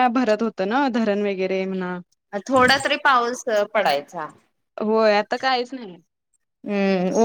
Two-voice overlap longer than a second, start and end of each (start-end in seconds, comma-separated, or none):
none